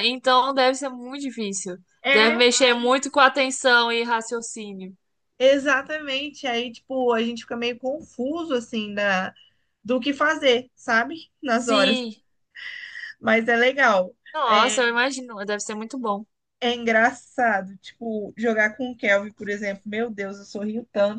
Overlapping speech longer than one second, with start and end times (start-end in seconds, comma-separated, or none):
none